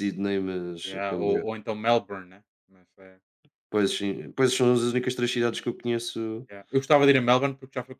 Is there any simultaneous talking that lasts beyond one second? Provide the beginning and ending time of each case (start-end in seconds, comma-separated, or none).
none